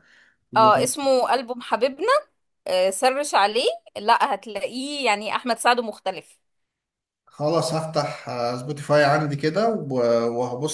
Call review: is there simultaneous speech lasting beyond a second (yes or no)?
no